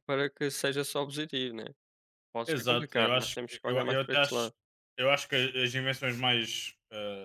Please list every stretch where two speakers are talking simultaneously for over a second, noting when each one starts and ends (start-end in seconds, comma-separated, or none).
2.5-4.5